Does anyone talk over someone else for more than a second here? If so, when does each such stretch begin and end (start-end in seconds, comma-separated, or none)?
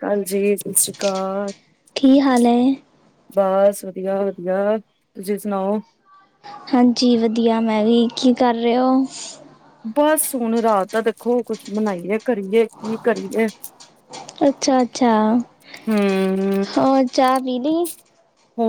none